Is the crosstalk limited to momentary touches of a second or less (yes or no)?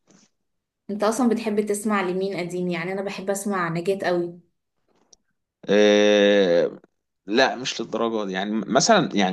yes